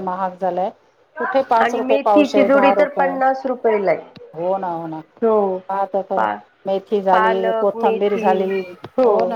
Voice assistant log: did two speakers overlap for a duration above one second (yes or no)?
yes